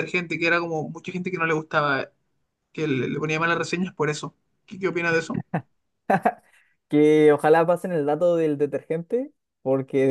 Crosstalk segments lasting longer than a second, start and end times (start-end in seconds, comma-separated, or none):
none